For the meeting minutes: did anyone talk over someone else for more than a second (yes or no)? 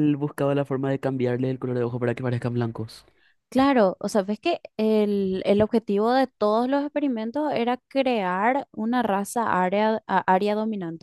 no